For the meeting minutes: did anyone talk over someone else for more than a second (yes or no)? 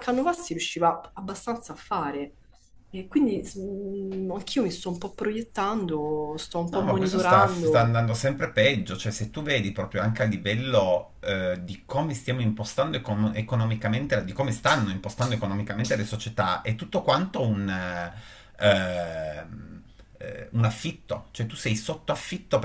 yes